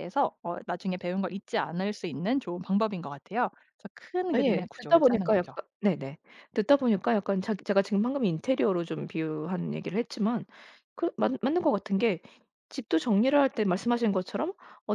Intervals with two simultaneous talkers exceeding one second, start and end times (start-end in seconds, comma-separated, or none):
4.3-5.9